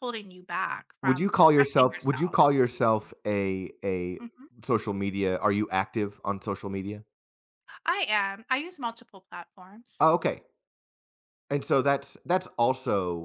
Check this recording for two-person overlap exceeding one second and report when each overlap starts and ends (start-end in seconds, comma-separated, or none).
1.0-2.4